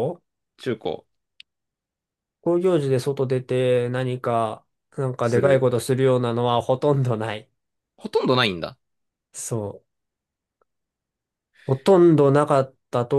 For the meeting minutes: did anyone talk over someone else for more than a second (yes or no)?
no